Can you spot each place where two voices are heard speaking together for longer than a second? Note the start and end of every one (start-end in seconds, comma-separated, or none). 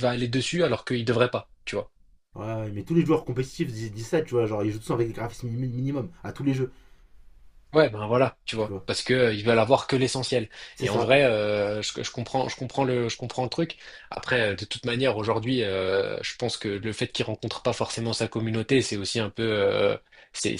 none